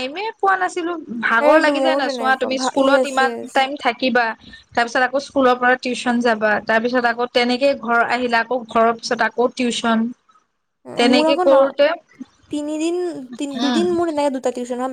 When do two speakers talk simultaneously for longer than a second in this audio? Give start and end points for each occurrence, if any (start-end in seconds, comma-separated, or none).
1.4-3.5